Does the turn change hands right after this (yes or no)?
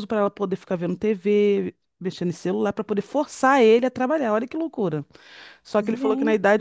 no